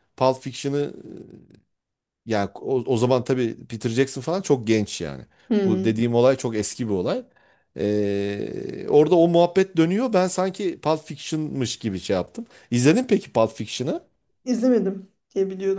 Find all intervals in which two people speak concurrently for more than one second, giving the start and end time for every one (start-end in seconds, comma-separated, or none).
none